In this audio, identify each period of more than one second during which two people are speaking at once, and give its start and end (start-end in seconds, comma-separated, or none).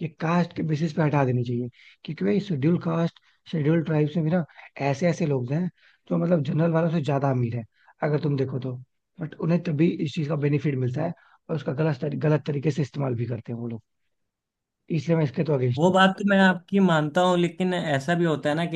none